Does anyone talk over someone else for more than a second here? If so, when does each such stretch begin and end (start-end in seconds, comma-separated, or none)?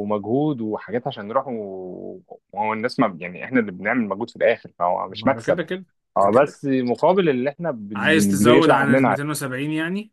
7.9-9.2